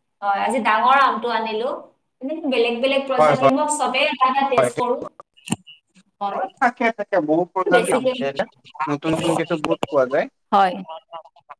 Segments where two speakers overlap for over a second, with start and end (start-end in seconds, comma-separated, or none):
none